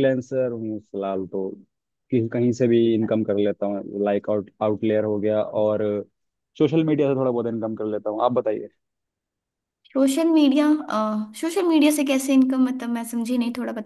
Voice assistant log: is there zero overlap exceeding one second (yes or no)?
yes